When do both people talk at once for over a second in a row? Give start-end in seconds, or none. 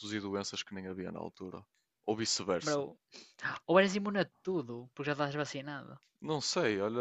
none